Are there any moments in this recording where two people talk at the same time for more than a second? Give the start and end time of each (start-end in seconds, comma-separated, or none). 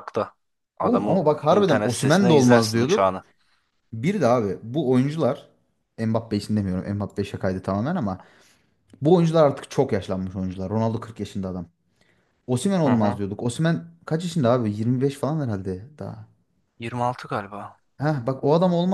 0.8-3.1